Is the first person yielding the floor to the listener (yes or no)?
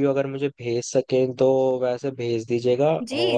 yes